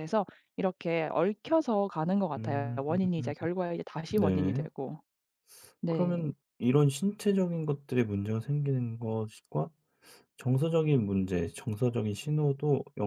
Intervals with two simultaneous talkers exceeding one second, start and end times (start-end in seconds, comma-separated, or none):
none